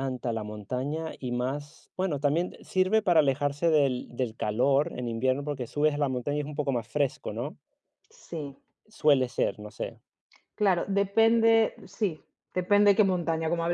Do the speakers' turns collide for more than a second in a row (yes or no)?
no